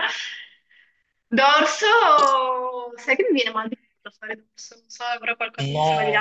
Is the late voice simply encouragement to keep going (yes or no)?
yes